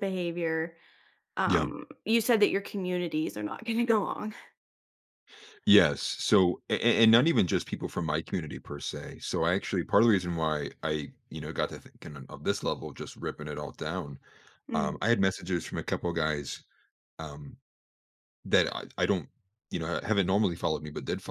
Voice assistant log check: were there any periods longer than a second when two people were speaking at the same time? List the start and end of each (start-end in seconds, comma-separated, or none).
none